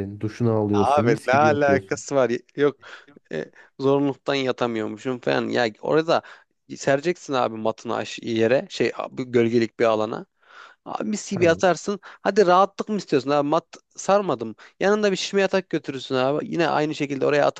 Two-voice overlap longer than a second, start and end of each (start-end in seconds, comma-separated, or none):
0.7-2.0